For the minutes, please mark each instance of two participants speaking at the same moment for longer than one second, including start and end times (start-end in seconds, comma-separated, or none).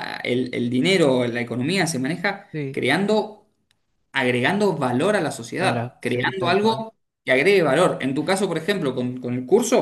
5.6-6.8